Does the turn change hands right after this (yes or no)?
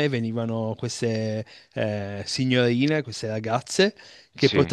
no